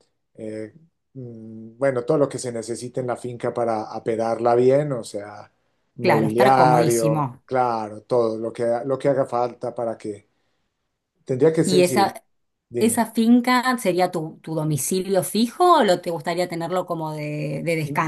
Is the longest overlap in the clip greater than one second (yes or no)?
yes